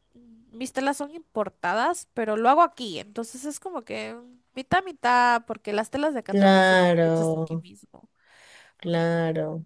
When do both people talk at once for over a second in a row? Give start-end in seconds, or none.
6.2-7.7